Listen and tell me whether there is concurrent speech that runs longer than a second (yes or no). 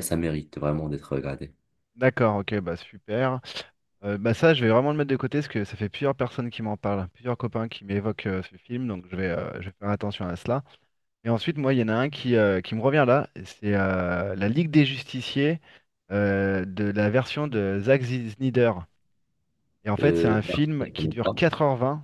yes